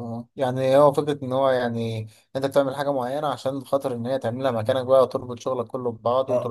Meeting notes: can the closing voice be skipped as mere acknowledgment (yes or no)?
no